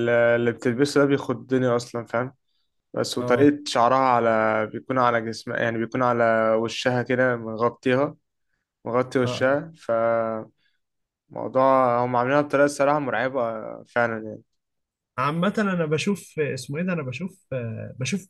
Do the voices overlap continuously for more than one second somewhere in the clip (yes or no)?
no